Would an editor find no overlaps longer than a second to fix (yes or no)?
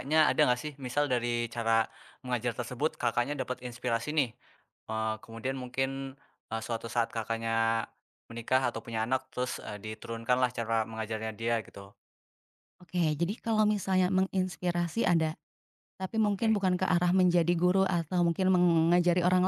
yes